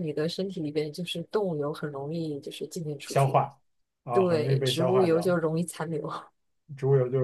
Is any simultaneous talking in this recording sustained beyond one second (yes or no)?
yes